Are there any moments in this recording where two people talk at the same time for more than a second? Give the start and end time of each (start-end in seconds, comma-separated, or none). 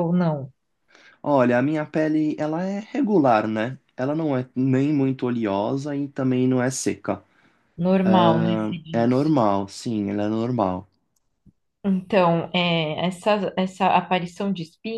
8.0-9.3